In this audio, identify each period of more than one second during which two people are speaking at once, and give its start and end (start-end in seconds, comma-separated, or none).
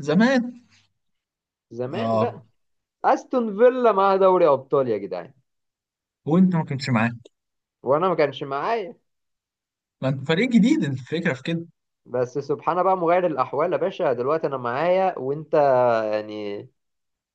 none